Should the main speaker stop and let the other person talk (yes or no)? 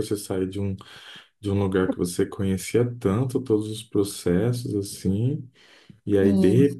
no